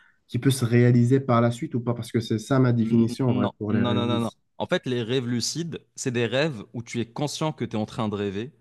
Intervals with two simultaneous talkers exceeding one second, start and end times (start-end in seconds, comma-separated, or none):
2.8-4.4